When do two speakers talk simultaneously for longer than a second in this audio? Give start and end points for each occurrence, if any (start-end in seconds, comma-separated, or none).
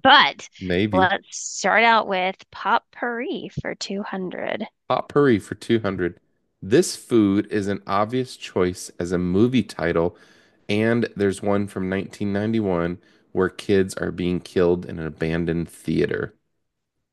none